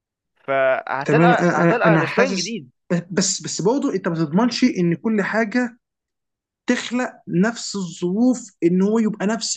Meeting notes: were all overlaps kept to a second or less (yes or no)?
no